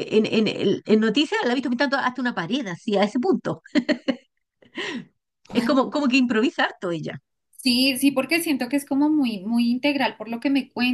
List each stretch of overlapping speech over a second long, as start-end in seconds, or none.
none